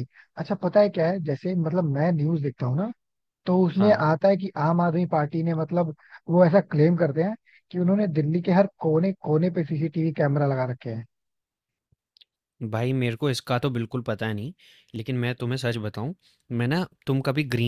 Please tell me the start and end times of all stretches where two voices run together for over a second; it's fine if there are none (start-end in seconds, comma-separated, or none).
none